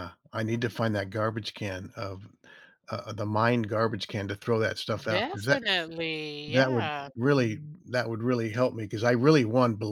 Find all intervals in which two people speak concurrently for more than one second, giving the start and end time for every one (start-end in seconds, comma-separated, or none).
none